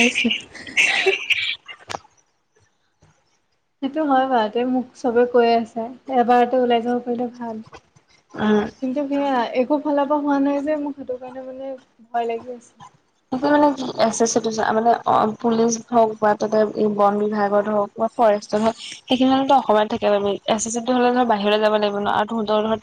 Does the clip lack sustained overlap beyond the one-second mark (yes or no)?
yes